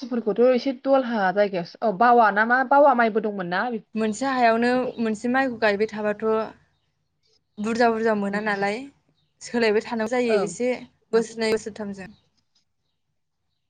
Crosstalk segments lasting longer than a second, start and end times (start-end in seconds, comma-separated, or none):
none